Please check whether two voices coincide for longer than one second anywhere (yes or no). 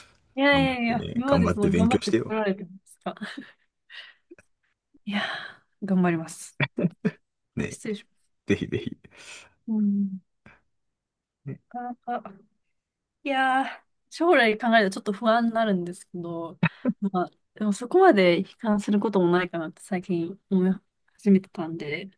yes